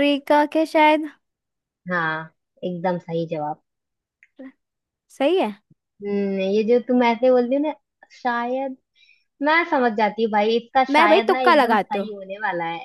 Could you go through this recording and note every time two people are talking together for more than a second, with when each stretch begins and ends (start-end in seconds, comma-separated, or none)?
10.9-12.1